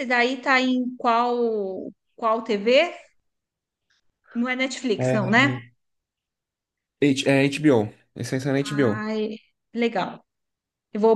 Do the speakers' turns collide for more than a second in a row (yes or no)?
no